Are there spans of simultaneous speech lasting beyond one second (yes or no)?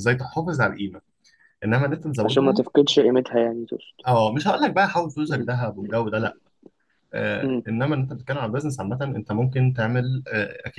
no